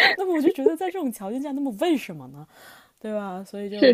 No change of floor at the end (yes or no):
no